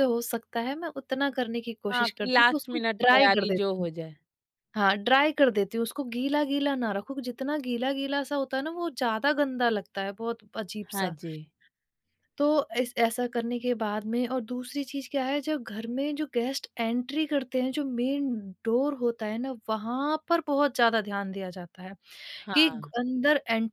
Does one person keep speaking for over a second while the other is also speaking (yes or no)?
yes